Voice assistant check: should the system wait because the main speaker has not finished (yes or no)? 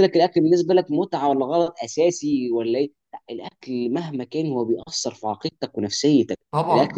yes